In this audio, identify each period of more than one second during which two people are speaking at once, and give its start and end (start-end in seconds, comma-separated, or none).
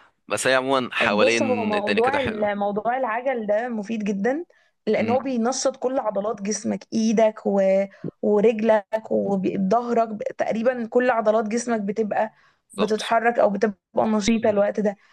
1.0-2.5